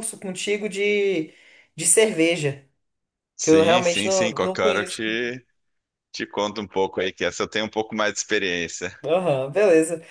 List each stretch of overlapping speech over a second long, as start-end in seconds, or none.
3.4-5.0